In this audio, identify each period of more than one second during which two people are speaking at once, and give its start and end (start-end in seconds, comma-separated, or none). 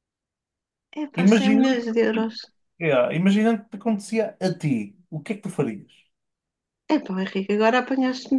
none